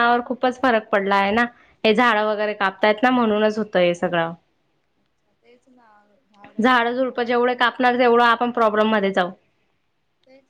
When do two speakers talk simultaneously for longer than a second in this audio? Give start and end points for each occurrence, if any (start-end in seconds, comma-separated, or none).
6.6-7.9